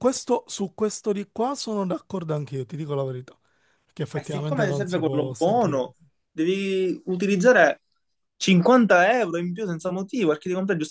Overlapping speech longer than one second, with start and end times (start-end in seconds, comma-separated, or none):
4.1-5.8